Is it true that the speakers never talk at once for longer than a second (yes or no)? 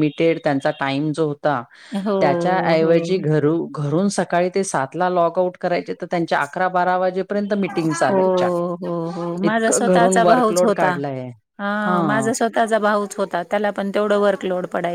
no